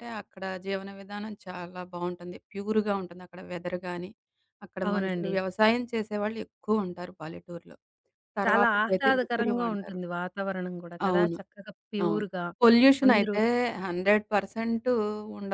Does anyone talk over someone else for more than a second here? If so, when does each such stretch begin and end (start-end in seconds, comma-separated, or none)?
8.4-10.0